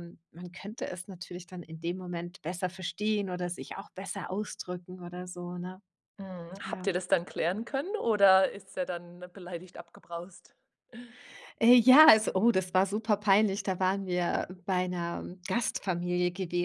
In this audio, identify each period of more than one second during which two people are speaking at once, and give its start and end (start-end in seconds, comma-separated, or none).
none